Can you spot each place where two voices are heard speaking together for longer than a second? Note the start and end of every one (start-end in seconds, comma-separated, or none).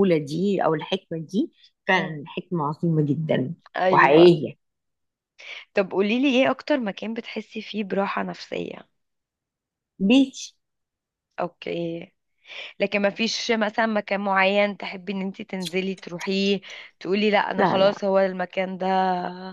none